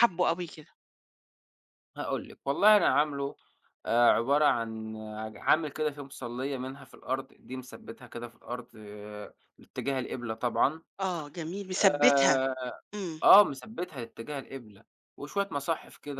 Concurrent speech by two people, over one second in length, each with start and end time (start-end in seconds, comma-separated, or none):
none